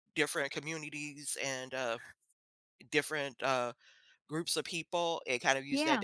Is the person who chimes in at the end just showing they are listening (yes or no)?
yes